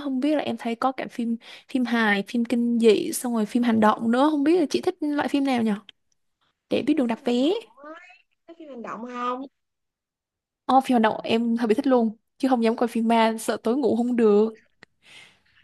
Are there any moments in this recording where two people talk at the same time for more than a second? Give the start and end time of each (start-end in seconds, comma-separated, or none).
none